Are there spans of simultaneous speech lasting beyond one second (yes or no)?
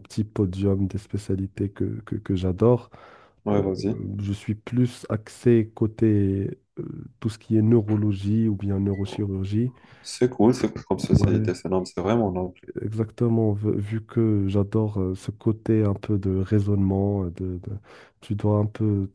no